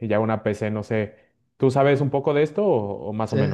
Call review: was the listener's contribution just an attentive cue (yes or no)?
no